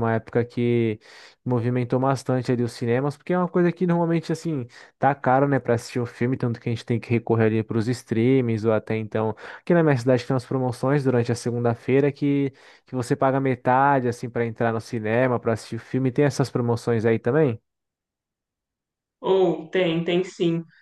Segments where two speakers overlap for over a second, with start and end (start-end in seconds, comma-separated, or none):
none